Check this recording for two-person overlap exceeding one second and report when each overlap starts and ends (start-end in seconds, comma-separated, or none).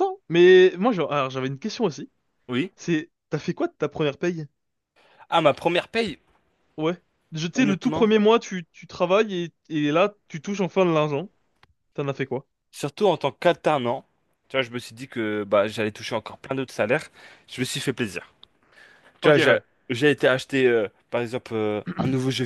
none